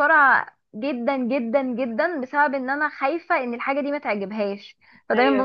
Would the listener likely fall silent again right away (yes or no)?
yes